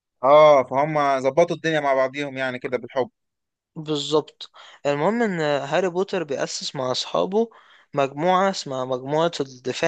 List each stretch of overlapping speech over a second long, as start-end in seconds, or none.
none